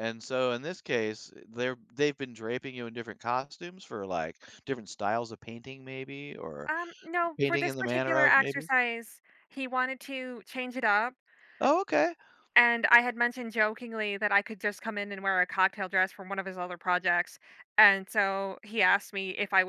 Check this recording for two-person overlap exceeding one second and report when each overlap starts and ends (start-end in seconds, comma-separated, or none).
7.4-8.7